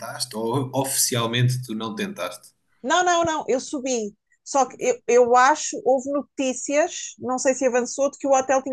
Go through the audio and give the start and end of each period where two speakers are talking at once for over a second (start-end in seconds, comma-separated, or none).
none